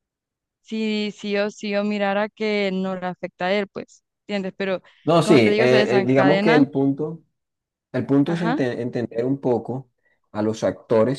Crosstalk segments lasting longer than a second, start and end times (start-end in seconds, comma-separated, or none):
5.2-6.7